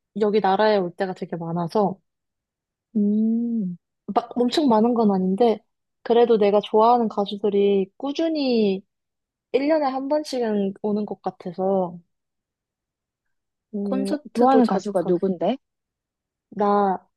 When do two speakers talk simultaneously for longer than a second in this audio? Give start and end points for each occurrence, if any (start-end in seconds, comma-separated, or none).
13.8-15.1